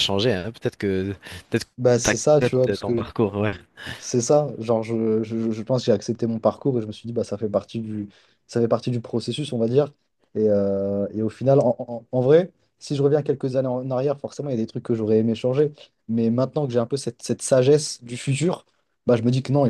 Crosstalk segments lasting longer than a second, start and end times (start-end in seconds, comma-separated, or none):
1.8-3.1